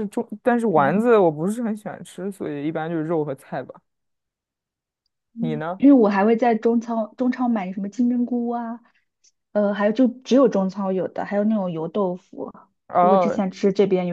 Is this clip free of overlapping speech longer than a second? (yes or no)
yes